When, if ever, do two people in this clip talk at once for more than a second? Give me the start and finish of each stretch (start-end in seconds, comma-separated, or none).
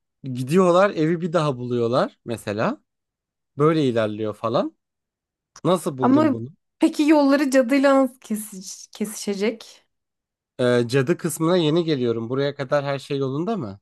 none